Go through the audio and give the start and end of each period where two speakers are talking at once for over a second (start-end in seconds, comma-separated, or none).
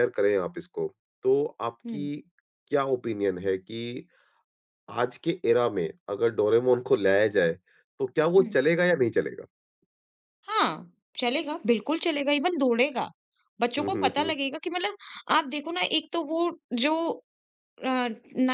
none